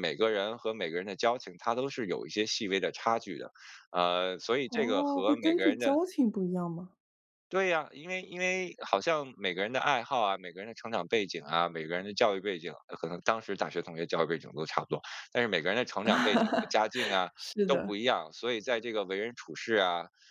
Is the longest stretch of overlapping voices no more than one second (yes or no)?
no